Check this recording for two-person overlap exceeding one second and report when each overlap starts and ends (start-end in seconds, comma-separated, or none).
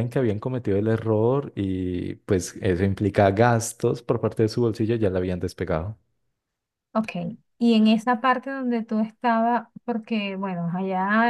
none